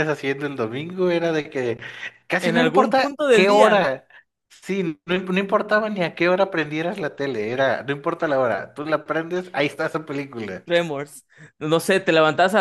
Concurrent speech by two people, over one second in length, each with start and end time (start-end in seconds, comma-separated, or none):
2.4-3.9